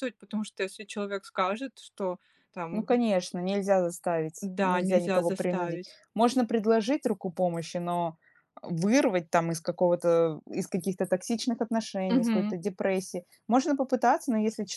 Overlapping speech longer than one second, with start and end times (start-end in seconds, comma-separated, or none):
4.4-6.0